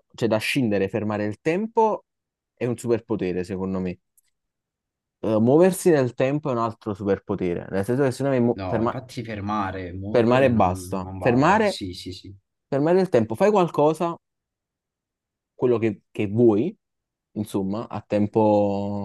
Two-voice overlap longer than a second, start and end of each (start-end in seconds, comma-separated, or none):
10.1-11.8